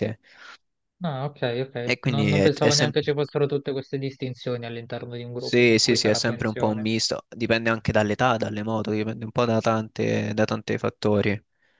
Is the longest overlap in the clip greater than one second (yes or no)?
yes